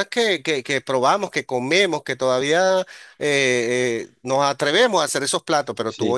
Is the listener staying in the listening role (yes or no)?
yes